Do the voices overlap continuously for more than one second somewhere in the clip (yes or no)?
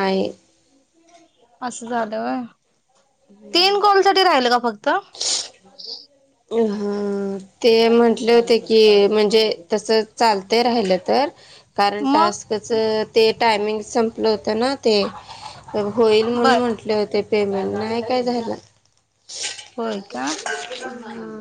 no